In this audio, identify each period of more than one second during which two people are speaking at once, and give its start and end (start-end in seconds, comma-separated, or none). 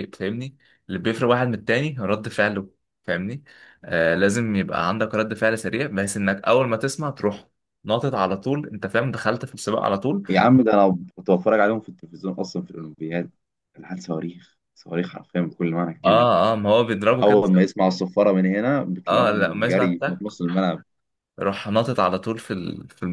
19.1-20.3